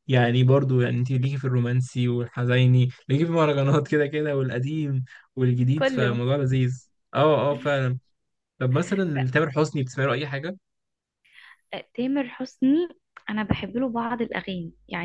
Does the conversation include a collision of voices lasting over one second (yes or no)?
no